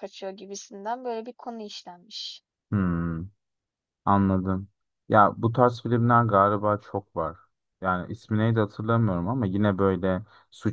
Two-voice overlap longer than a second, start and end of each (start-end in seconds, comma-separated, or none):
none